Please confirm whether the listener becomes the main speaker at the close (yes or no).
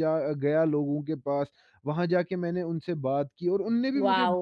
yes